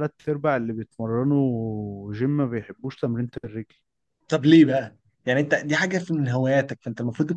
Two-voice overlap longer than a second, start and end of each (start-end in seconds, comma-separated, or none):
none